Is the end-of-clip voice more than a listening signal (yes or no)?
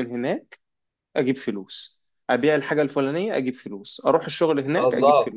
no